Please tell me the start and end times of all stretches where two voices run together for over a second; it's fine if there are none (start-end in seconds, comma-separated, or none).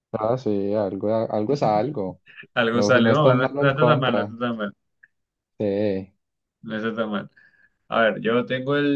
2.7-4.3